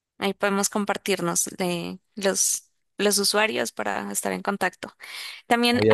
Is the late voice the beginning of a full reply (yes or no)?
no